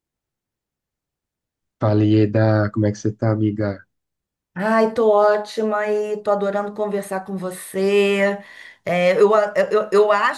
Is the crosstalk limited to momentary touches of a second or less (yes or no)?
yes